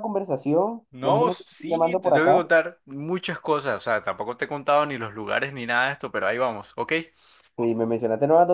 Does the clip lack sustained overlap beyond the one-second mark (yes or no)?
no